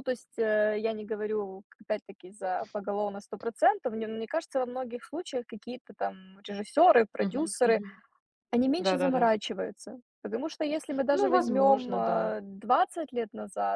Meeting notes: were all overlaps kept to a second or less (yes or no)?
no